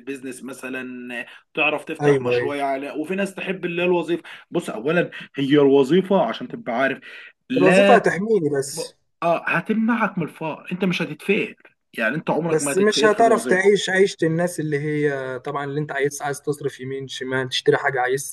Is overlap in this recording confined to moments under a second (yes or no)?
no